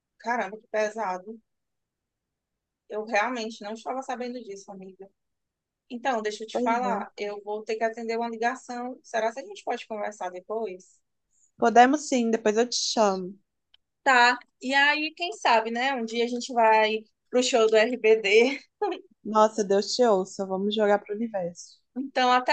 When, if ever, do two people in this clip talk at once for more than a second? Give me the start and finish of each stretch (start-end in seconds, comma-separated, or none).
none